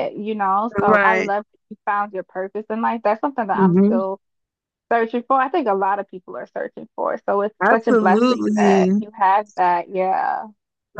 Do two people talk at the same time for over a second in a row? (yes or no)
yes